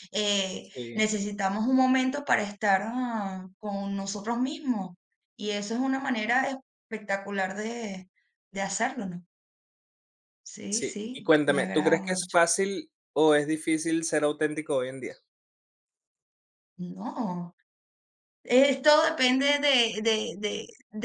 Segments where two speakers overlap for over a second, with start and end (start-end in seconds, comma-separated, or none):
10.7-12.4